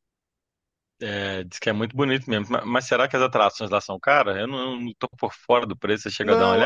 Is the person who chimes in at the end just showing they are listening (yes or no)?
no